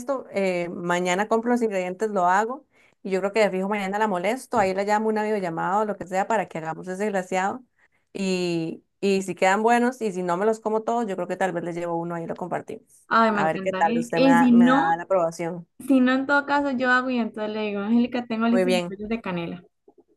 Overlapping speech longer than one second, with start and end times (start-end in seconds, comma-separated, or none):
13.1-14.9